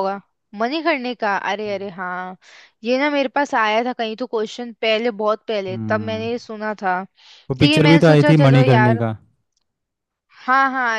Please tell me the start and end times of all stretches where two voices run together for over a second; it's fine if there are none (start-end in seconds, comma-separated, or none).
7.6-9.0